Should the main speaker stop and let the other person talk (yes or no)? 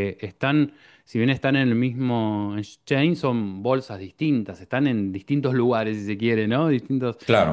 no